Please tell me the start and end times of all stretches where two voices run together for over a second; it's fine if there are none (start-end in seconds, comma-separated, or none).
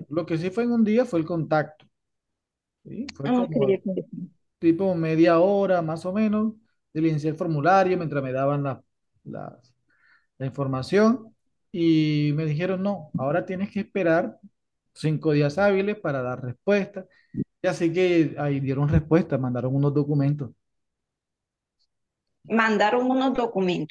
none